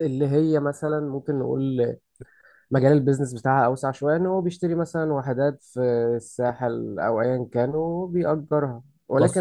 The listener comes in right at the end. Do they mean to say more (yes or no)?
no